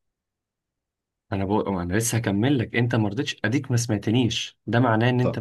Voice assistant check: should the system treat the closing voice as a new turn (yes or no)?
no